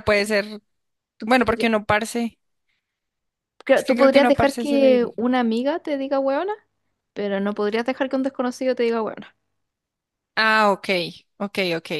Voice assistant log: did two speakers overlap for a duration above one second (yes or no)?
yes